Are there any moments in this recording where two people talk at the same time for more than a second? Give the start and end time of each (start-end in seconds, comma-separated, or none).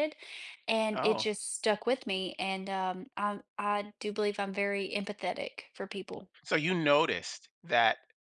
none